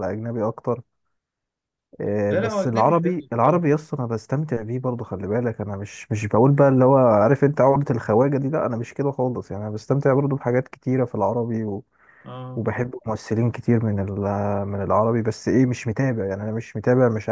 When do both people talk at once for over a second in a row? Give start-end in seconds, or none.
2.3-3.6